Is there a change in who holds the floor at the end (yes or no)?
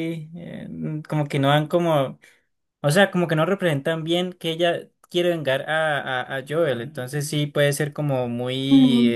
no